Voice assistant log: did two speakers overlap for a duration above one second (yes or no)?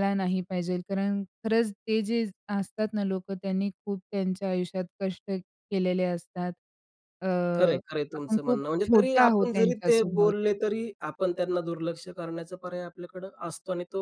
yes